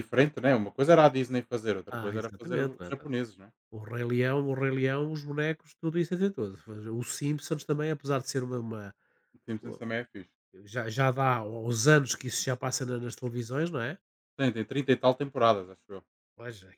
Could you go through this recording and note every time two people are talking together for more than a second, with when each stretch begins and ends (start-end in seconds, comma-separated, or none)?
1.9-3.1